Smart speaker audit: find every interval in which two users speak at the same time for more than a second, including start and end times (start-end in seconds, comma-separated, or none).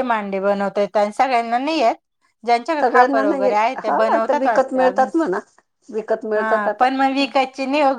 2.8-5.1